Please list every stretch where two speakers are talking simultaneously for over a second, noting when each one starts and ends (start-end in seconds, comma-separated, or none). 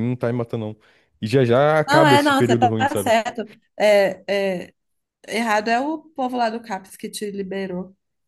1.9-3.1